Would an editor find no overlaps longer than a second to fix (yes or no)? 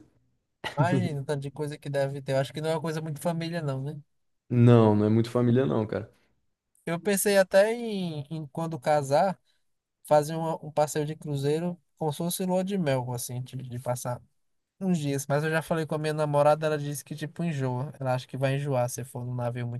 yes